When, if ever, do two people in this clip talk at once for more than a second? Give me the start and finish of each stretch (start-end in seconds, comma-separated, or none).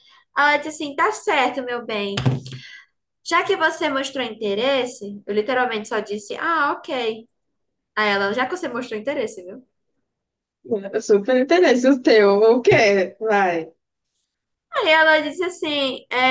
none